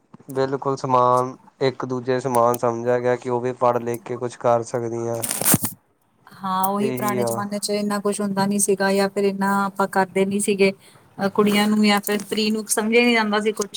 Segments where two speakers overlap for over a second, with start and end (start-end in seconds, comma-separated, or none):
none